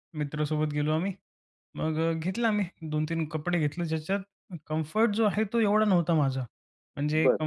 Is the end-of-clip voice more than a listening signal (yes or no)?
no